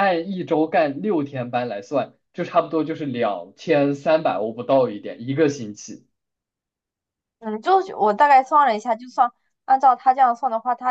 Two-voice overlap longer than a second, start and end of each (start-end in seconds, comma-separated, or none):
none